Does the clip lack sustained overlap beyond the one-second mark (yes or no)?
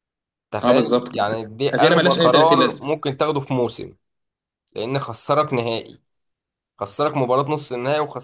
no